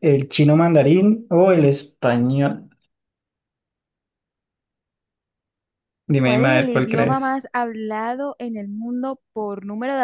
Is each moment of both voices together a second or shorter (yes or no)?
no